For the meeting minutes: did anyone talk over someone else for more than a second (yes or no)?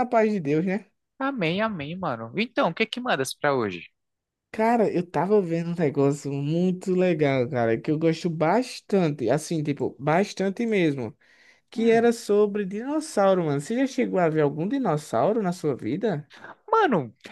no